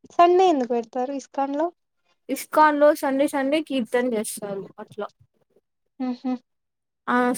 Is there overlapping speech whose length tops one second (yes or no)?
no